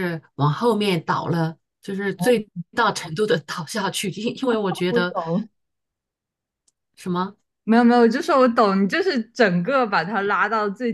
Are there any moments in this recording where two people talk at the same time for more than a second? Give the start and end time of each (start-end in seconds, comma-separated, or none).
none